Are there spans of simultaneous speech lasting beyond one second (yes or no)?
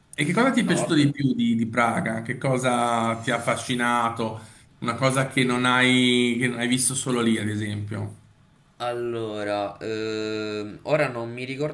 no